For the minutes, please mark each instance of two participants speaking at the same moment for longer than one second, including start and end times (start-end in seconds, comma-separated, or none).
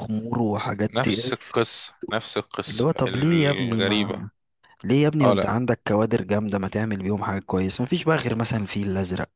2.7-4.2